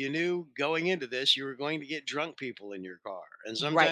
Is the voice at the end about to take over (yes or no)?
yes